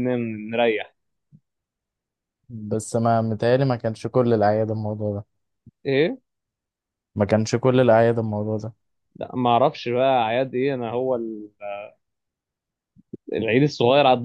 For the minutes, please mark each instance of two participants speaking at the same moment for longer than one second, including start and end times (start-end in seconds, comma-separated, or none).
none